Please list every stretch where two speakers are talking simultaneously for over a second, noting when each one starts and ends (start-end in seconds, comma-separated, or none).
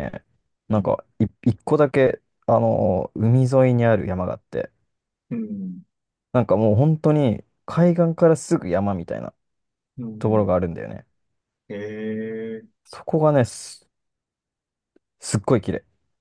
none